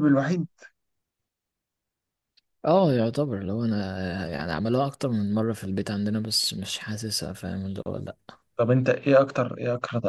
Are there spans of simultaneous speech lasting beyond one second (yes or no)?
no